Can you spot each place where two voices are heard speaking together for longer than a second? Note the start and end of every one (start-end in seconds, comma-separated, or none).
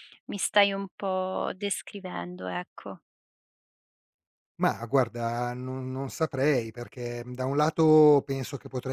none